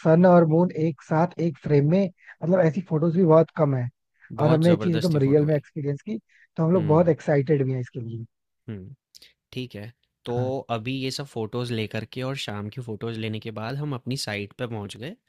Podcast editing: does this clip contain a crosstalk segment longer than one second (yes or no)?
yes